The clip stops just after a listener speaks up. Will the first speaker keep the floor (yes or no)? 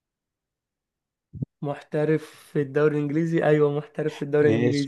no